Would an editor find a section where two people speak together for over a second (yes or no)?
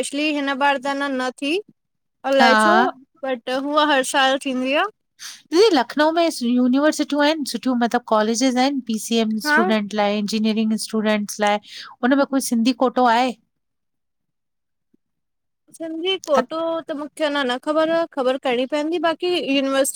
no